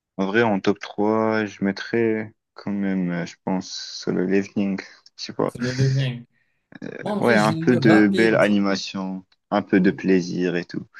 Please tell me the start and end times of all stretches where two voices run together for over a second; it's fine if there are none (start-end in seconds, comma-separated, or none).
7.2-8.4